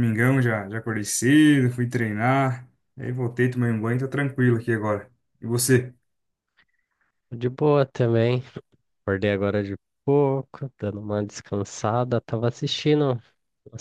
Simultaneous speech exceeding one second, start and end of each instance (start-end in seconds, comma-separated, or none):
none